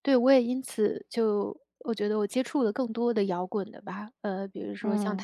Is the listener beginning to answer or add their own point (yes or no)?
no